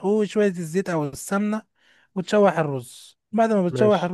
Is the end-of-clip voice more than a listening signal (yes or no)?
no